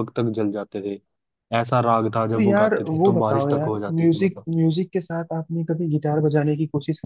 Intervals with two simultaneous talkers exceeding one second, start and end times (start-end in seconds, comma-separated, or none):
2.3-4.5